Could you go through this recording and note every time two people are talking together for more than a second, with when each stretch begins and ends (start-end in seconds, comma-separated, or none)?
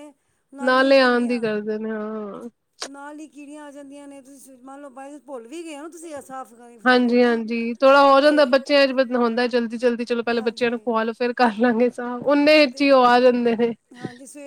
none